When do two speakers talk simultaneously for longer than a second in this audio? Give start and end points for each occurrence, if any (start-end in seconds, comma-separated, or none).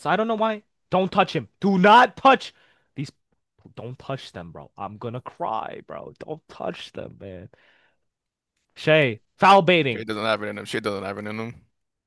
none